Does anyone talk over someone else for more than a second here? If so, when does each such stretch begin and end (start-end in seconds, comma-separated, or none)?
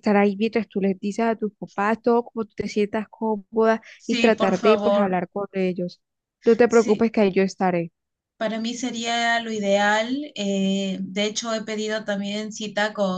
4.0-5.2